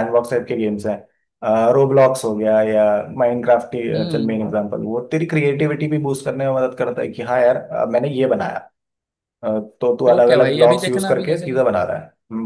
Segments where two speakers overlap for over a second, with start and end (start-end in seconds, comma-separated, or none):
10.1-11.7